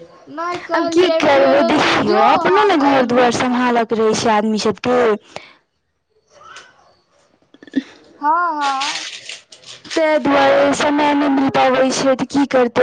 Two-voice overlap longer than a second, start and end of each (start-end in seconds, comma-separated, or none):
0.8-3.2